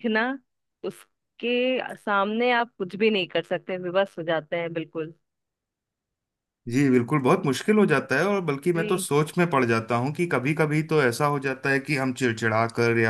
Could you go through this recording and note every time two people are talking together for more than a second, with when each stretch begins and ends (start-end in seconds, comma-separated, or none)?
none